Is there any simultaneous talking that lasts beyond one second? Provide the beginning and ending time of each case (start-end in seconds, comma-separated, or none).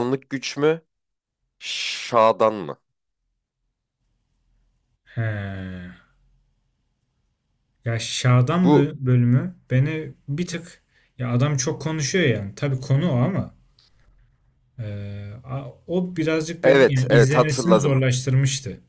16.6-18.0